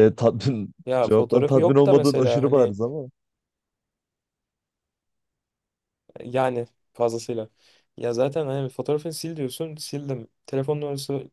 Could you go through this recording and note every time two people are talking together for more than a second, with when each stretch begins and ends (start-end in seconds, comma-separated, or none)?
0.9-2.8